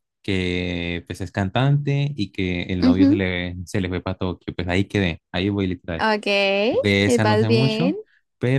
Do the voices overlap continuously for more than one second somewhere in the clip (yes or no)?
yes